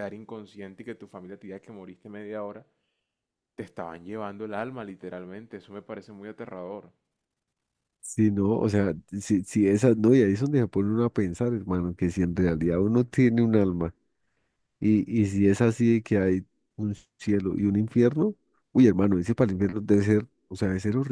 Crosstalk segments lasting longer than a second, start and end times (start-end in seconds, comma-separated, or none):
none